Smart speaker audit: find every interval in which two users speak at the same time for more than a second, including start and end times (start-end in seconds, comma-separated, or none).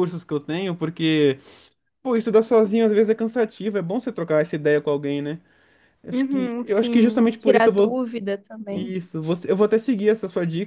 6.1-8.0